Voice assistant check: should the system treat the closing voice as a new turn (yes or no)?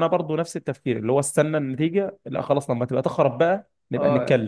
yes